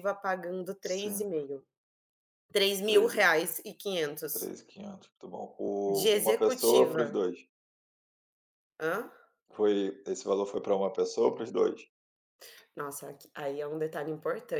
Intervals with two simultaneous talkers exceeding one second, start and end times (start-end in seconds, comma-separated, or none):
5.9-7.2